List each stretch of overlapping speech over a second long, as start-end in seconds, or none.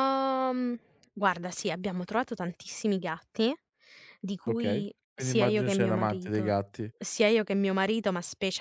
4.5-6.5